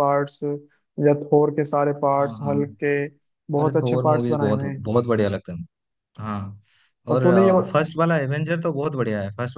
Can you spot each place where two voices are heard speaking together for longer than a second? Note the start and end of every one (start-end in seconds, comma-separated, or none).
3.6-4.9